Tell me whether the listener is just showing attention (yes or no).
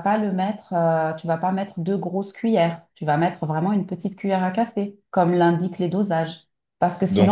no